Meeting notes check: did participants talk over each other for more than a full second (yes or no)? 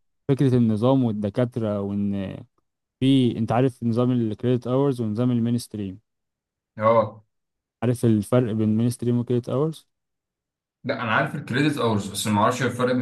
no